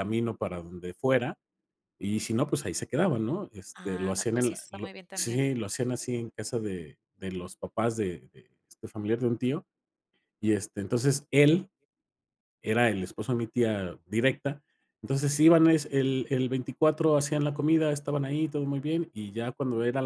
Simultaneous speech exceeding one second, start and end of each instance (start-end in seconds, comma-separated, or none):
3.7-5.4